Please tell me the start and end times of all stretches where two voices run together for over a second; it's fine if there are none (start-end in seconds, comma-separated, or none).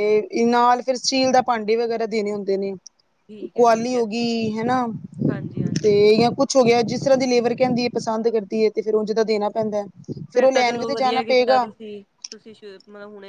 10.3-11.6